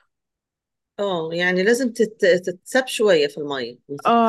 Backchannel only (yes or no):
no